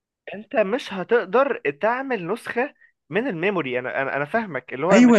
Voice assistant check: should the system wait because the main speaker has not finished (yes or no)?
no